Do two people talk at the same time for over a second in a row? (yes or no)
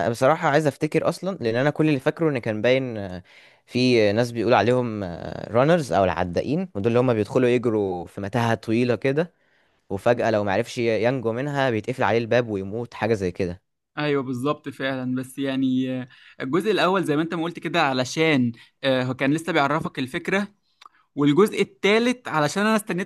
no